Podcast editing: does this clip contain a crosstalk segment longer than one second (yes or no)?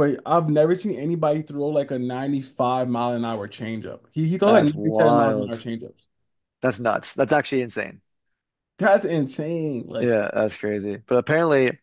yes